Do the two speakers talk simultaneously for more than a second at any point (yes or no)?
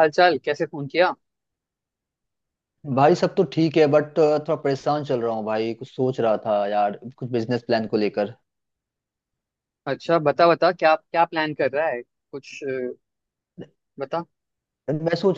no